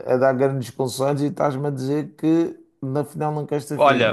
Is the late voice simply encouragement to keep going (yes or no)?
no